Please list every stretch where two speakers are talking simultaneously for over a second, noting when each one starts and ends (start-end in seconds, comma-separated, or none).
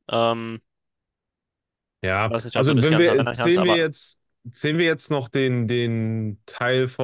2.1-3.9